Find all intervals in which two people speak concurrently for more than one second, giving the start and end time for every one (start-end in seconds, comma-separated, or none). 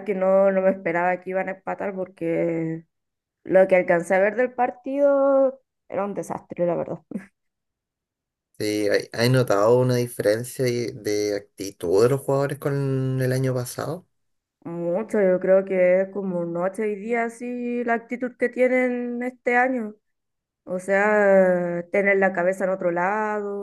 none